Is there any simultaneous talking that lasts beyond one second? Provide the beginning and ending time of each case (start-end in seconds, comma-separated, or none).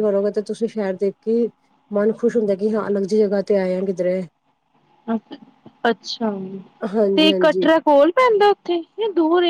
none